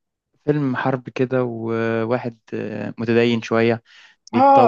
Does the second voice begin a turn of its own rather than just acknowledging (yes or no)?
yes